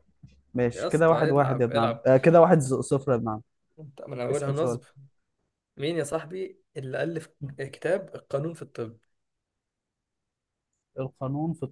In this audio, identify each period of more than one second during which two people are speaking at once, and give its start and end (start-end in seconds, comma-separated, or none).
0.7-2.1